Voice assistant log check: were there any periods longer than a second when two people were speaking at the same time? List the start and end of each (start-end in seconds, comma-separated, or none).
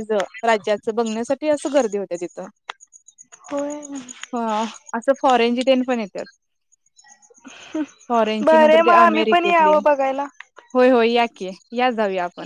8.4-9.8